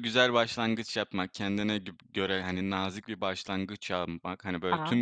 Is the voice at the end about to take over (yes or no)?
no